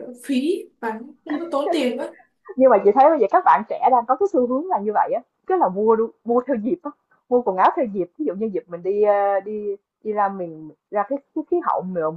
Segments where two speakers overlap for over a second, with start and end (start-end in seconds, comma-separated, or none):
none